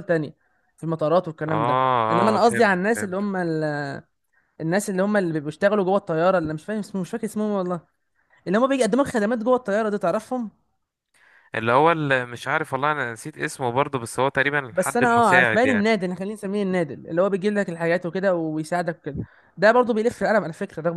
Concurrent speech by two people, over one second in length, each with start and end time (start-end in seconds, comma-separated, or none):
1.5-3.2, 14.7-16.0